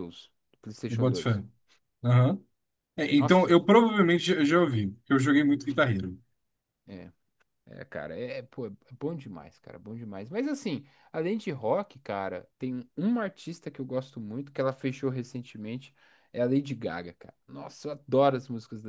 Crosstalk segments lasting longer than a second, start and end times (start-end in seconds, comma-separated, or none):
none